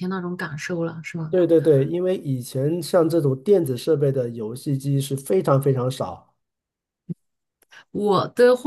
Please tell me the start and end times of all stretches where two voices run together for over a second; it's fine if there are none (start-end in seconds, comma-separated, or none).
none